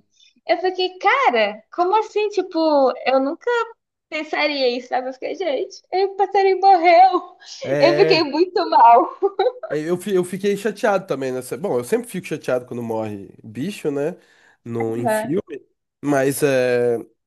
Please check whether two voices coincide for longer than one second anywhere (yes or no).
no